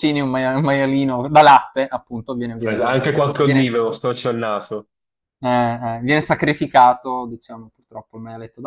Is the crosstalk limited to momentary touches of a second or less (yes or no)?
no